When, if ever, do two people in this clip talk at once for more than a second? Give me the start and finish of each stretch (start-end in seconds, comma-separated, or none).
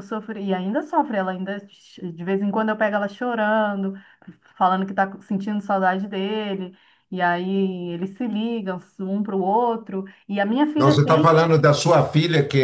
none